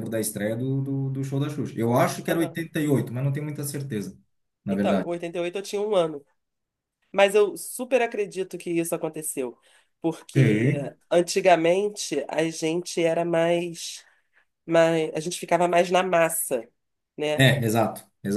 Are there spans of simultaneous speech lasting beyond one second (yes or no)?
no